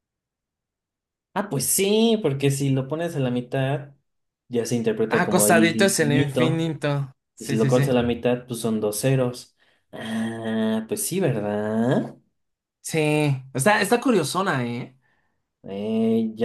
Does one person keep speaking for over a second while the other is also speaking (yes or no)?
yes